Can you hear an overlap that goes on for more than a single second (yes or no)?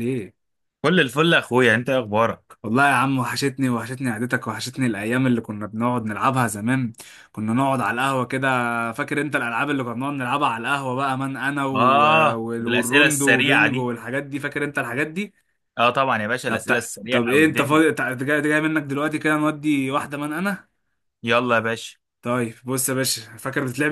yes